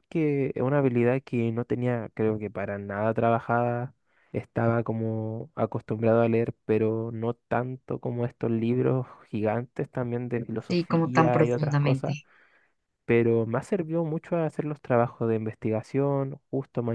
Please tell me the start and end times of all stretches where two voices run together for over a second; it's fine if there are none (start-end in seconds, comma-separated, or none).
10.7-12.2